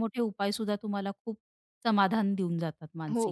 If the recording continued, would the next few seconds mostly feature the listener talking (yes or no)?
yes